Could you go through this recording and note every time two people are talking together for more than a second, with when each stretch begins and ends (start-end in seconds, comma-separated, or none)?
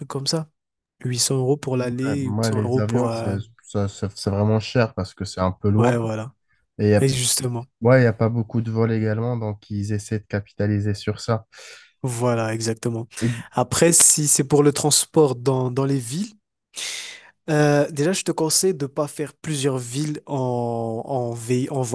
1.8-3.3